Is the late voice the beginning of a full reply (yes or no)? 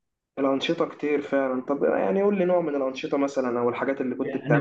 yes